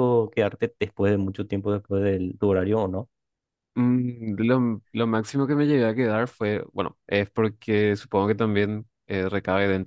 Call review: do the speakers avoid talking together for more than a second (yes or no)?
yes